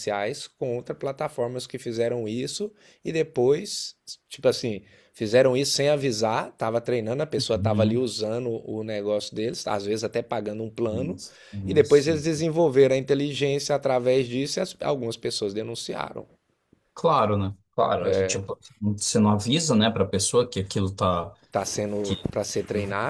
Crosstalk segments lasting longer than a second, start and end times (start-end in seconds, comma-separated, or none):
none